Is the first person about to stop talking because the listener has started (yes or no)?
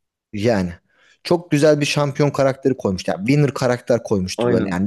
no